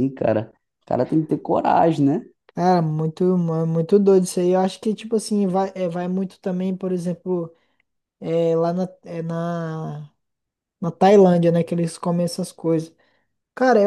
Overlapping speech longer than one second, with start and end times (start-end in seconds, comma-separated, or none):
none